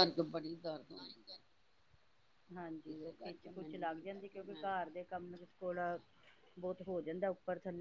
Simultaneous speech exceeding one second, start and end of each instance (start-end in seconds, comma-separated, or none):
2.9-4.7